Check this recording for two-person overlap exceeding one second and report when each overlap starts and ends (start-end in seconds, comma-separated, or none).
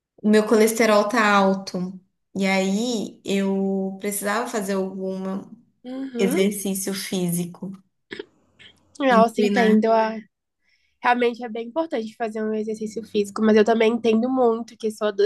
none